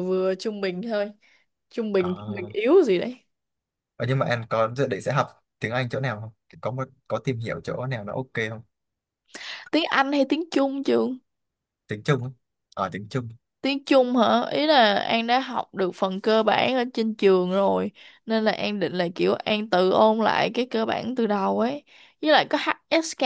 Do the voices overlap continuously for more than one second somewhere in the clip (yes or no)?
no